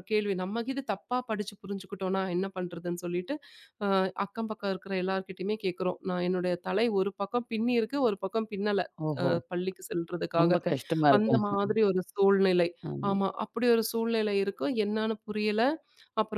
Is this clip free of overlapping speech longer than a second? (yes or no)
yes